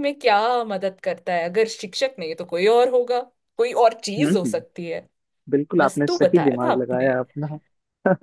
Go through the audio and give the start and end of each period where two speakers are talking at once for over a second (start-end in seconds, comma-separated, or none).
5.8-7.1